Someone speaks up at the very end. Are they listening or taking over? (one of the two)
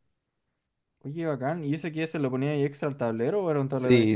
taking over